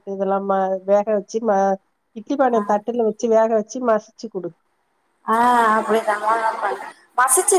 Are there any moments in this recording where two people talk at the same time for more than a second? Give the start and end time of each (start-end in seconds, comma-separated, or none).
none